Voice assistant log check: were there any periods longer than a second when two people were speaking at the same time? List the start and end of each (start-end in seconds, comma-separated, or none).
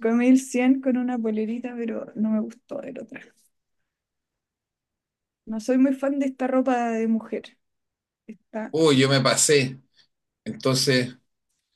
none